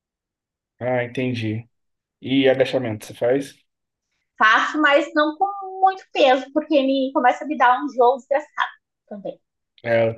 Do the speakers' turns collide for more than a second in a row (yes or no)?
no